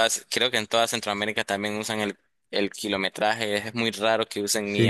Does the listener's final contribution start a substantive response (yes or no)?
yes